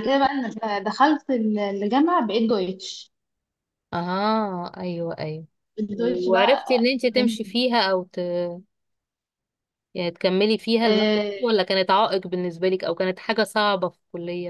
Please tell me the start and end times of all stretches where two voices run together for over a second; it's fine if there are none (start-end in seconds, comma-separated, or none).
6.0-7.6